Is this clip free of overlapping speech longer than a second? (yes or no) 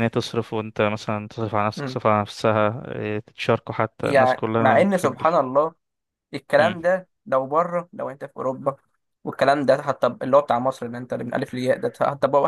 no